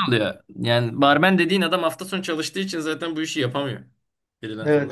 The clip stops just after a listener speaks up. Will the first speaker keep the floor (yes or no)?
no